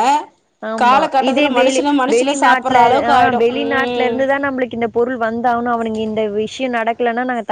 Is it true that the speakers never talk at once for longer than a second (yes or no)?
no